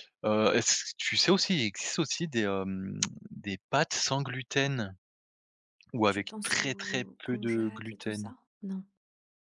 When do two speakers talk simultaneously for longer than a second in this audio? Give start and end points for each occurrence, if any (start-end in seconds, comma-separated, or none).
6.1-8.3